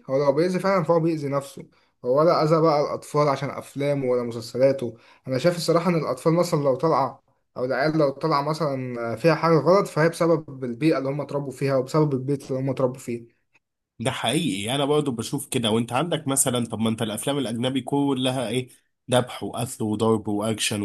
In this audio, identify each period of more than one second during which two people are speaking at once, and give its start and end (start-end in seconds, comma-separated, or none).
none